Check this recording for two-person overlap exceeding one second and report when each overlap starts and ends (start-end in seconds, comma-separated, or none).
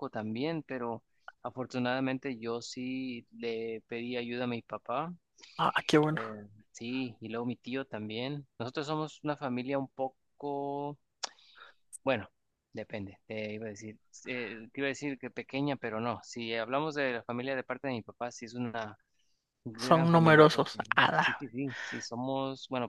19.8-21.3